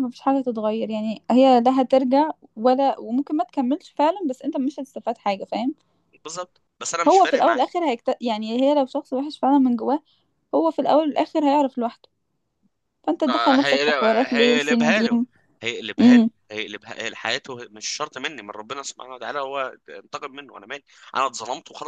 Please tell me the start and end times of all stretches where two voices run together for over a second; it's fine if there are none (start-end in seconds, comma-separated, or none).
13.3-15.2